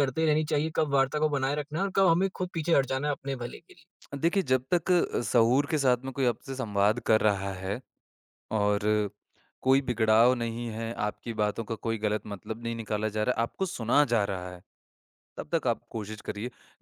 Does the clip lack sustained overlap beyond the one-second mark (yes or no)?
yes